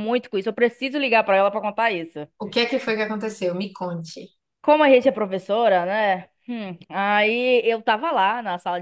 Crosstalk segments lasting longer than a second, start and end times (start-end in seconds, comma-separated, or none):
none